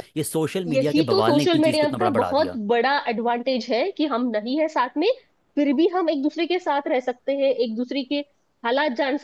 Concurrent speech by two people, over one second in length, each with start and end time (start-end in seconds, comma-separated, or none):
0.7-2.6